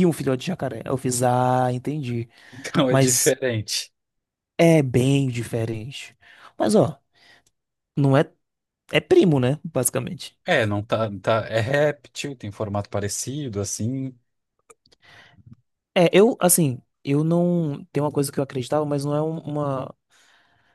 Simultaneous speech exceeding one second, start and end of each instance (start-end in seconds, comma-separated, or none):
none